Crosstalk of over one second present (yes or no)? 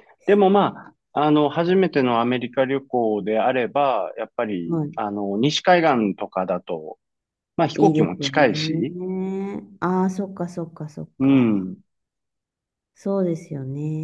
yes